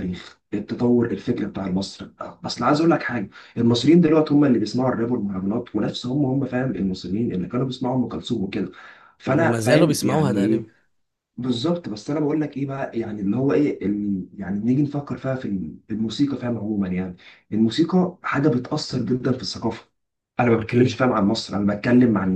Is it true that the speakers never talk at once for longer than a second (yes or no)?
no